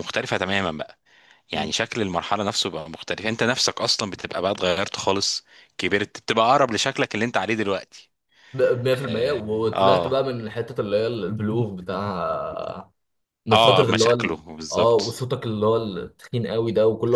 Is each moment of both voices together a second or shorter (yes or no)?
no